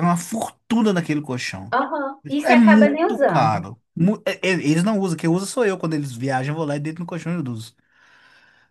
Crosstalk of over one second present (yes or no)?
yes